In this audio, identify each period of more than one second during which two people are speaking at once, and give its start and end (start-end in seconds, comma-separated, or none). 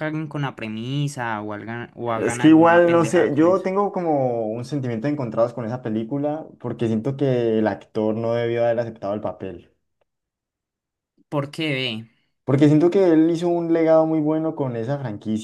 2.2-3.7